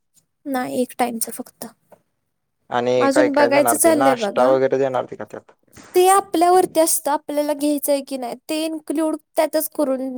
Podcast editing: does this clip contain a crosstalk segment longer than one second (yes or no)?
yes